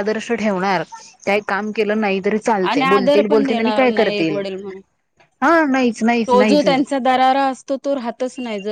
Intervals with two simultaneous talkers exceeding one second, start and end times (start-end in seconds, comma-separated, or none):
2.9-4.4